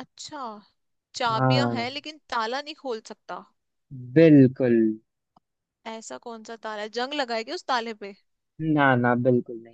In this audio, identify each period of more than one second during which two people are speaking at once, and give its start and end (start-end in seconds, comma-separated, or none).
none